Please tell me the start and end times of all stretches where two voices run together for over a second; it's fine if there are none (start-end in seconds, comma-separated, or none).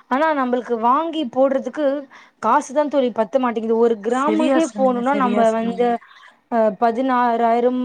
4.2-5.9